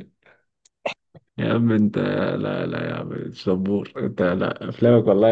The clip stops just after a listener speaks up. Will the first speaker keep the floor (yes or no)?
yes